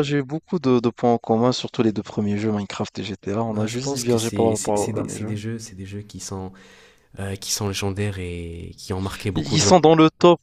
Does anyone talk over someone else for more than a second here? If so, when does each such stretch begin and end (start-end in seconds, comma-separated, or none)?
3.5-5.3